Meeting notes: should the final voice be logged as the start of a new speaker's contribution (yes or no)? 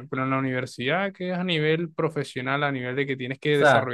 yes